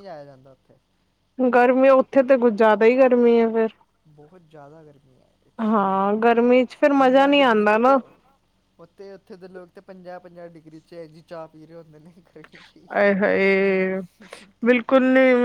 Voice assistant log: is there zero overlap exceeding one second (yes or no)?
no